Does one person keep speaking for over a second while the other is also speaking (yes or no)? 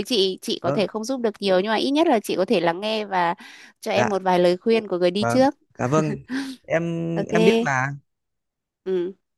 no